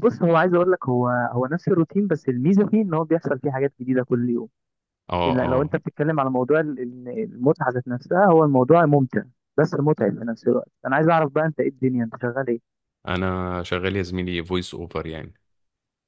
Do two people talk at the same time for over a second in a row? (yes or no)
no